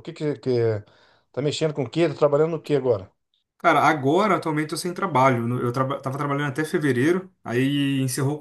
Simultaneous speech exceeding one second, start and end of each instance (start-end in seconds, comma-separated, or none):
none